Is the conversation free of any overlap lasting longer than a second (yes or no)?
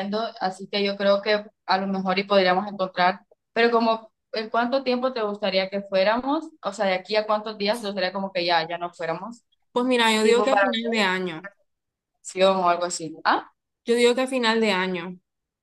yes